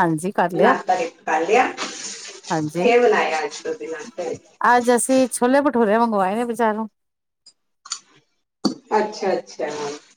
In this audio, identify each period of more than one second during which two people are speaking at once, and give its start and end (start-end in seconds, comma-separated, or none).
none